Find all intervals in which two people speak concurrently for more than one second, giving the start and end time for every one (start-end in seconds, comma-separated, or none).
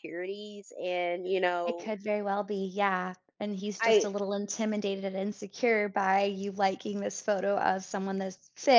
none